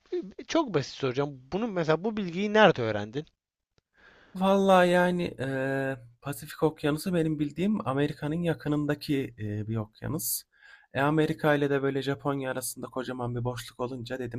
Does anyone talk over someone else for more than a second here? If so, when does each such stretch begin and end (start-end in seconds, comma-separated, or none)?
none